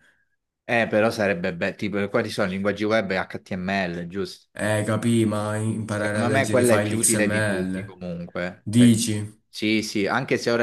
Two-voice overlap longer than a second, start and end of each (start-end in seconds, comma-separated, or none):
5.9-8.0